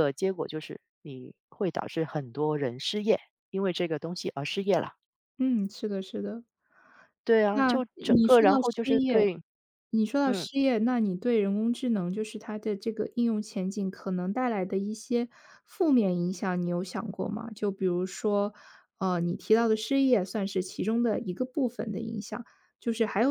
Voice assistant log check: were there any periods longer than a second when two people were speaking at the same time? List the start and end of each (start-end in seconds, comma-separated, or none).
7.5-9.3